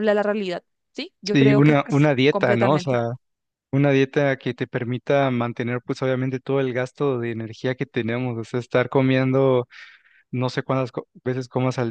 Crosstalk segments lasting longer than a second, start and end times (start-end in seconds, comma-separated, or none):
1.3-3.0